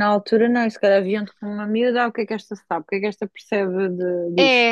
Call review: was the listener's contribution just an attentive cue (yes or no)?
no